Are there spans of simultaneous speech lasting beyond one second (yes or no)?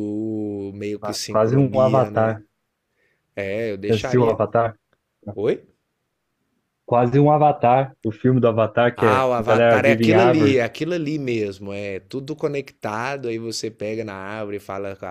yes